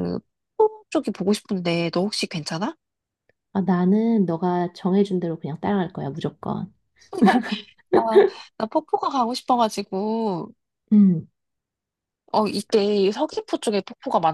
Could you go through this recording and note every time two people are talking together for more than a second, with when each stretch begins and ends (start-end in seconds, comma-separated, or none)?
none